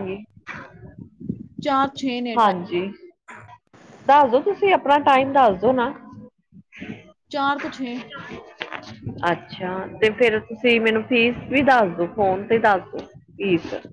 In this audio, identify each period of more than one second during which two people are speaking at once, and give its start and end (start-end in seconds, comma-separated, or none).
none